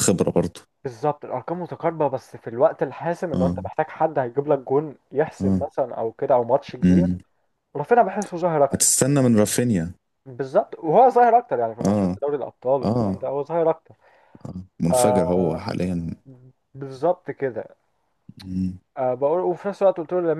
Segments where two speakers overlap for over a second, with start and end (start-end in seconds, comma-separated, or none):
none